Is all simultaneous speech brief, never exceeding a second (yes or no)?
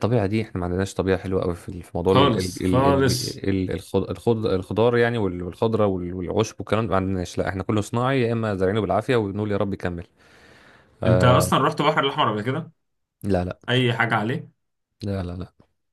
no